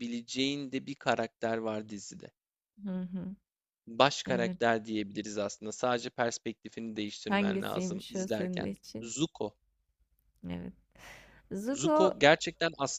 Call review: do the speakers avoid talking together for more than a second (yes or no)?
no